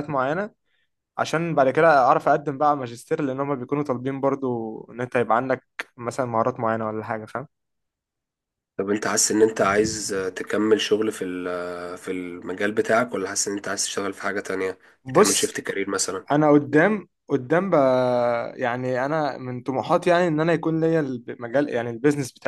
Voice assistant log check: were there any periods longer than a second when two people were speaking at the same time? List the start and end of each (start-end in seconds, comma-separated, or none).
none